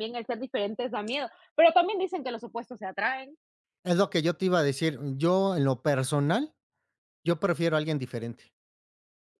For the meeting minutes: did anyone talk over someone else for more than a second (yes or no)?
no